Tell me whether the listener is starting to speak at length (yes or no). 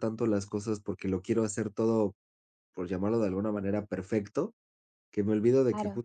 no